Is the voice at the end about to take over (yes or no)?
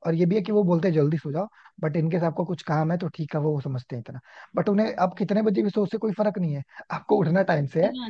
no